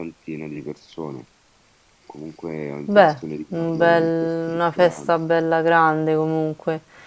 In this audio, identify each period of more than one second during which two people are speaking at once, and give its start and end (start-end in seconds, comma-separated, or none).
2.8-5.1